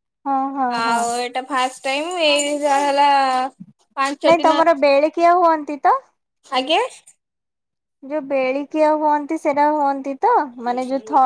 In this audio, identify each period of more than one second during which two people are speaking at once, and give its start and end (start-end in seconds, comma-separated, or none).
none